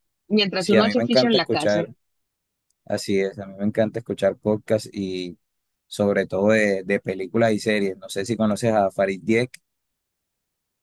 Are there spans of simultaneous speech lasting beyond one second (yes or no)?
yes